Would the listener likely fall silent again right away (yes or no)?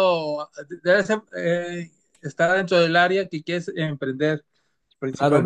no